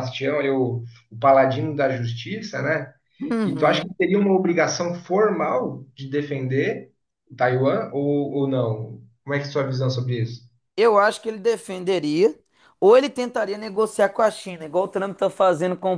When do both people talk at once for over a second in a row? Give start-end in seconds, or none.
none